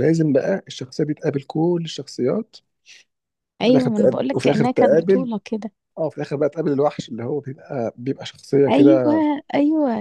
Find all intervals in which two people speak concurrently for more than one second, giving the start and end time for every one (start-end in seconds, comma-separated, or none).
3.6-5.3